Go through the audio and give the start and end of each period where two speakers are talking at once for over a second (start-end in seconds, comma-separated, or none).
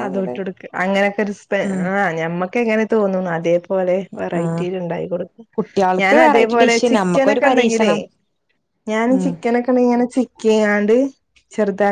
6.0-8.0